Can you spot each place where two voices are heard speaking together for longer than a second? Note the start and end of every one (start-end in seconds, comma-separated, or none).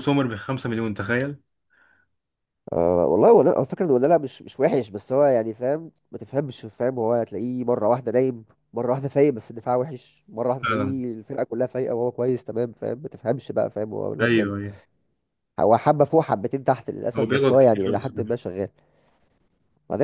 17.2-18.4